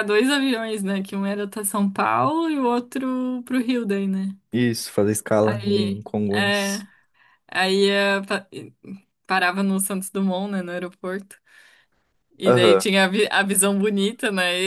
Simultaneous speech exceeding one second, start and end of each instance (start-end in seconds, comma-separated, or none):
5.4-6.8